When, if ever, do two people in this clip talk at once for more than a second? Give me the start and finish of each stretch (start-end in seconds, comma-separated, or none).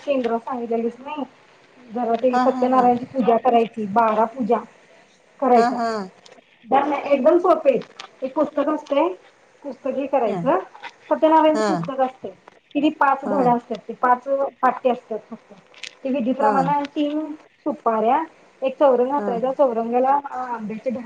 none